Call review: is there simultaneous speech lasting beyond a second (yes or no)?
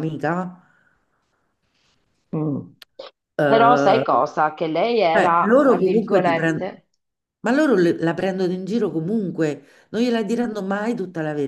yes